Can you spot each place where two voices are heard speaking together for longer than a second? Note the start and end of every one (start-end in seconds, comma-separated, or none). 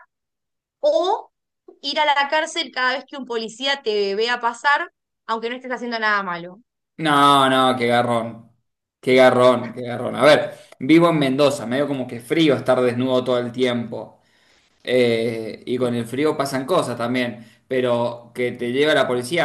none